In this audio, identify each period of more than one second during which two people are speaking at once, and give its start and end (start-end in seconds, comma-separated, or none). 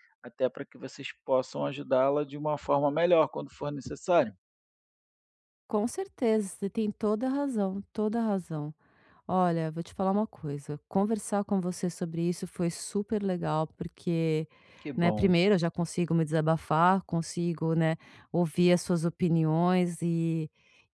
none